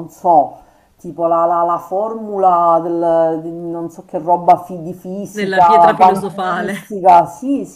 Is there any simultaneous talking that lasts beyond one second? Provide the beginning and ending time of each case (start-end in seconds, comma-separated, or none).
5.3-7.0